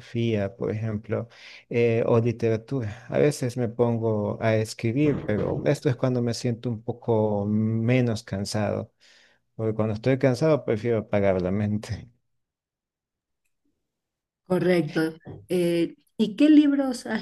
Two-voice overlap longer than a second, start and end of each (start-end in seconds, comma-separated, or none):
none